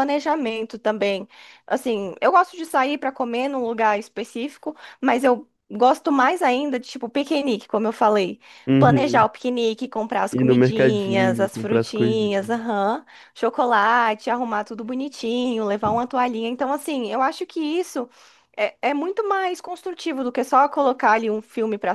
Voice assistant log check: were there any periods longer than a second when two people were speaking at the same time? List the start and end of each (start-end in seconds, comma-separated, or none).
10.3-12.6